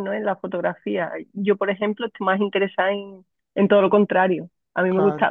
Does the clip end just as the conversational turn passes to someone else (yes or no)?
no